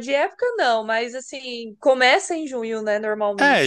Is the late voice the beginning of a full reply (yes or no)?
yes